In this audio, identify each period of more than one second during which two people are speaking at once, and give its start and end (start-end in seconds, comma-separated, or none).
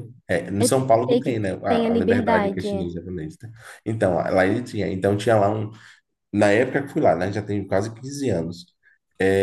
0.6-2.9